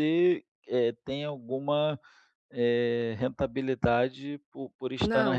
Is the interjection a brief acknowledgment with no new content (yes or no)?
no